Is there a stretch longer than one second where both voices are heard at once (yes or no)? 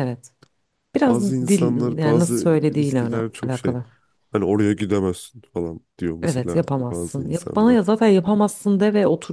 yes